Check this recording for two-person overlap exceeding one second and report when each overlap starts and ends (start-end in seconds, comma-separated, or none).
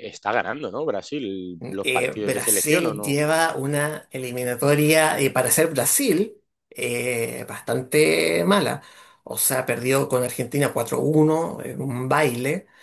1.6-3.2